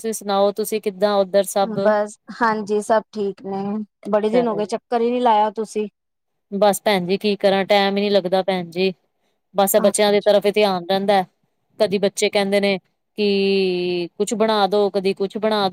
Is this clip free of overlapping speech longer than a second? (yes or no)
yes